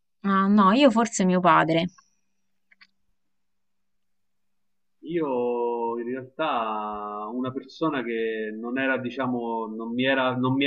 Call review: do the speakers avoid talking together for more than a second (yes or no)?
yes